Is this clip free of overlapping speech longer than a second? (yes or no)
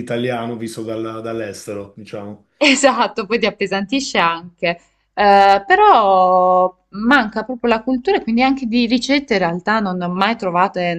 yes